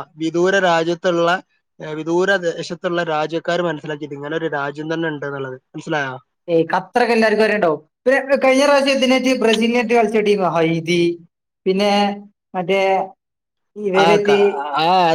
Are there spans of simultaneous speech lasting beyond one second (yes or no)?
no